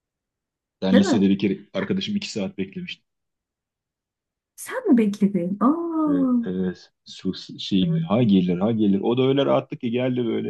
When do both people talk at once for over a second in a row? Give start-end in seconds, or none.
none